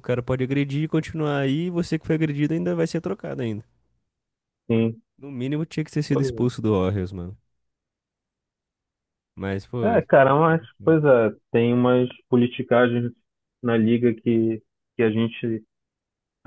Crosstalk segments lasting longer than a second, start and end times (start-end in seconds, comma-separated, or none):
none